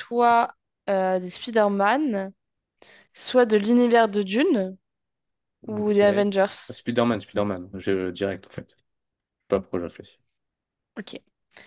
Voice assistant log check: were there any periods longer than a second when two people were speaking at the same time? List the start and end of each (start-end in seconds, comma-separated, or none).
none